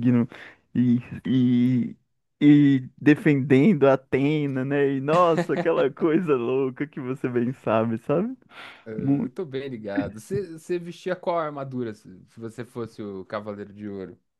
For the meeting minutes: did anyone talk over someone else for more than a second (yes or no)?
no